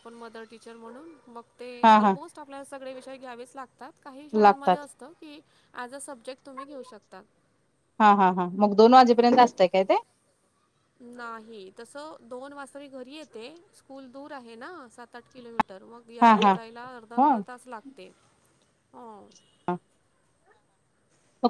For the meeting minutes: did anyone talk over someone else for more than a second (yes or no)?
no